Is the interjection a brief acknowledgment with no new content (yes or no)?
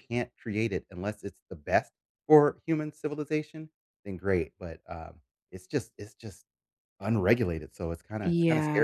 no